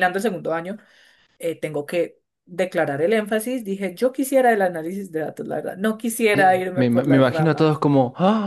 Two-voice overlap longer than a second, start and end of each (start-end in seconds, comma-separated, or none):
6.3-7.8